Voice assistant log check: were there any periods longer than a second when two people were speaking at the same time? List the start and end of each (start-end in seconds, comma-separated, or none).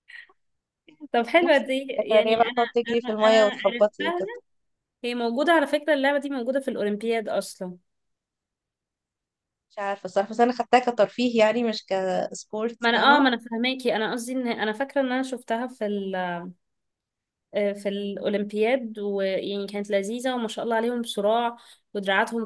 1.4-4.2